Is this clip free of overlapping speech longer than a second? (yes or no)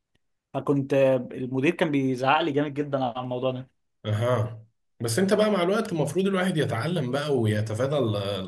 yes